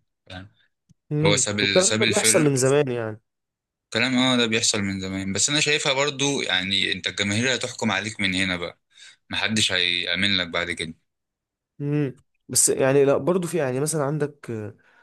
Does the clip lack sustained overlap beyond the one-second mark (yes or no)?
no